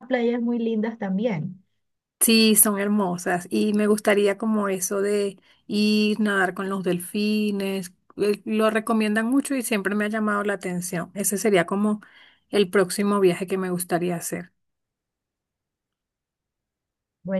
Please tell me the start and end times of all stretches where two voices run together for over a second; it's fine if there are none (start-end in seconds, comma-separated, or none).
none